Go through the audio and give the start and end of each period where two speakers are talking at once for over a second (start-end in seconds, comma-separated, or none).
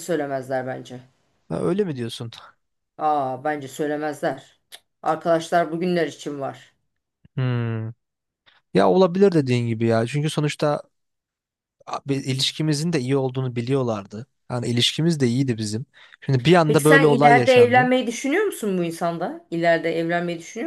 16.7-17.9